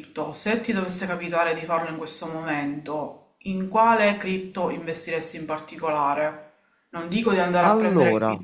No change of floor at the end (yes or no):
yes